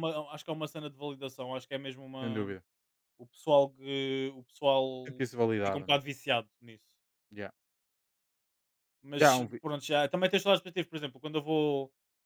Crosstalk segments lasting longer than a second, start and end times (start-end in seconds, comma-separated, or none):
none